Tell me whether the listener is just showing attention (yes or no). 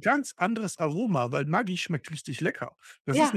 yes